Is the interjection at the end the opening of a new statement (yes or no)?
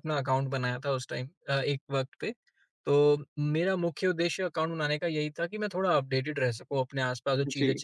no